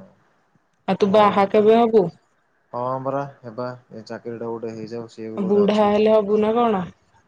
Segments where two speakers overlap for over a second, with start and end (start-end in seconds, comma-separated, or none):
none